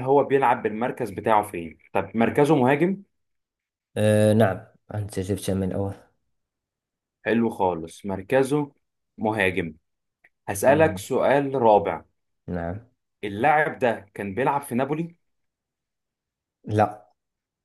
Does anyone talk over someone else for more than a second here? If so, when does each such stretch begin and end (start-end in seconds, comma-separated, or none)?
none